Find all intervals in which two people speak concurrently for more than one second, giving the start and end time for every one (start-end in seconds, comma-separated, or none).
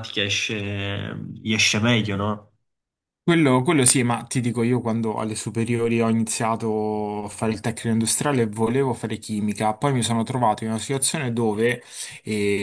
none